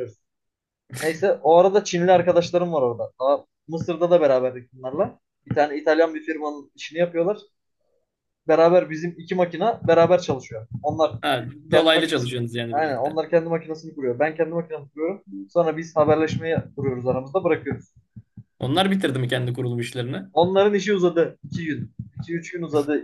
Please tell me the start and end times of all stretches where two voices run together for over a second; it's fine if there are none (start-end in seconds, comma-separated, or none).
11.7-13.2